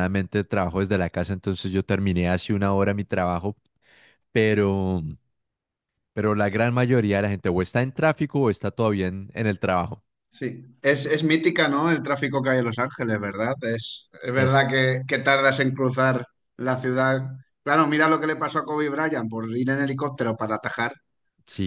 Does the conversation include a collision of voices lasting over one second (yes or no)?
no